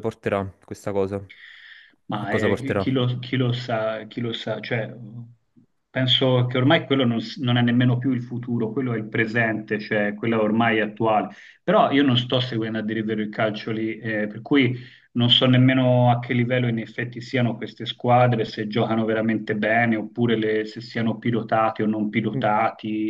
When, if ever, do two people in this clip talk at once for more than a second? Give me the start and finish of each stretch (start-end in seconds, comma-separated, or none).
none